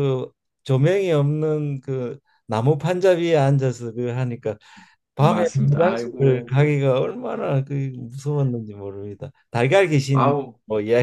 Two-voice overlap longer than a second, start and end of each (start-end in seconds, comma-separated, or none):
5.2-6.5